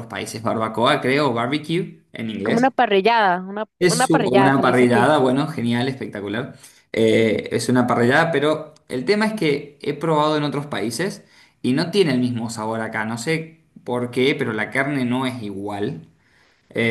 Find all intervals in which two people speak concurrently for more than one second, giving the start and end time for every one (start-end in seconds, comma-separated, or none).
3.8-5.1